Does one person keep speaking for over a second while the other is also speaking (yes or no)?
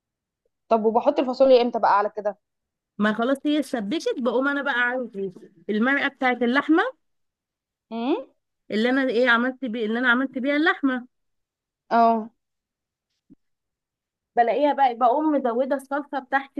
no